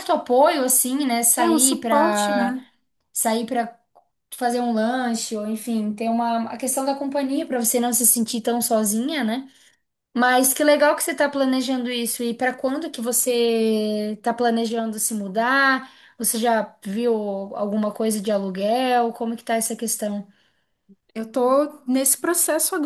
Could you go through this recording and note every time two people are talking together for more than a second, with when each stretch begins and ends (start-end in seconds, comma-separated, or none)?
1.4-2.6